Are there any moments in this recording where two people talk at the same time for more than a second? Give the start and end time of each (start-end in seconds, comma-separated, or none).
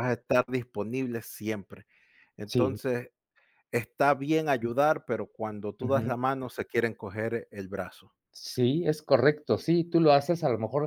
none